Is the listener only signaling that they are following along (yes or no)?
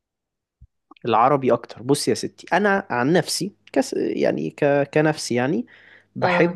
yes